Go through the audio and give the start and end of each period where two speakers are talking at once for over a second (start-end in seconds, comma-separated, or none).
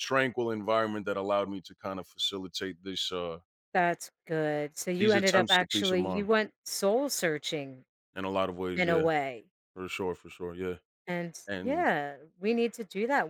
5.0-6.3